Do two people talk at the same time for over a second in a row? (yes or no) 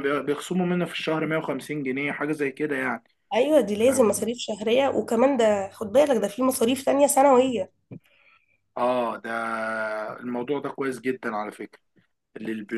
no